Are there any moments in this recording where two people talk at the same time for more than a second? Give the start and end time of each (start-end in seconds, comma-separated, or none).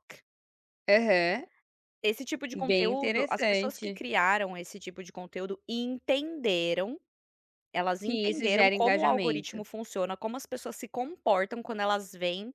2.7-4.0, 8.0-9.6